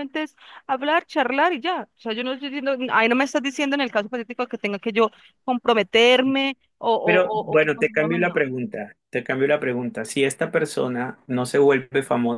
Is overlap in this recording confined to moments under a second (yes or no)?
no